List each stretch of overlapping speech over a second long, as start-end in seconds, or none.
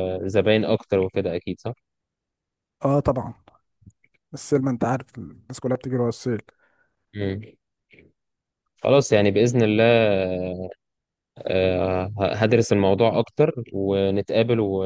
none